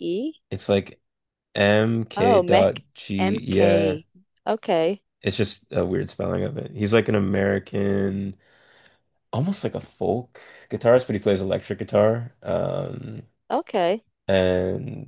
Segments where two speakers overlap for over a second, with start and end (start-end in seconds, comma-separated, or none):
2.2-4.0